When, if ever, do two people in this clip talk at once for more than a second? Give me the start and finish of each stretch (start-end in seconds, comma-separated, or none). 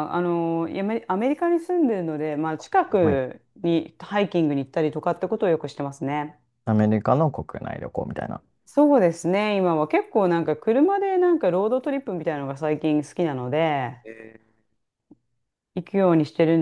none